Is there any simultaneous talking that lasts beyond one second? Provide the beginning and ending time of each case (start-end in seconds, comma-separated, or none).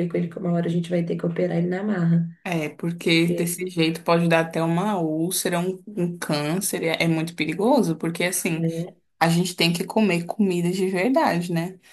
none